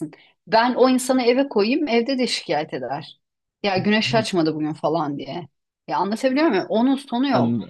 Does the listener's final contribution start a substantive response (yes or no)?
no